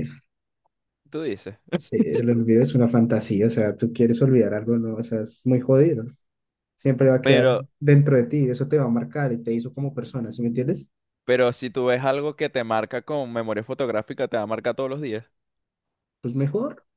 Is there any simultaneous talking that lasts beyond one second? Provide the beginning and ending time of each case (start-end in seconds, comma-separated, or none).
none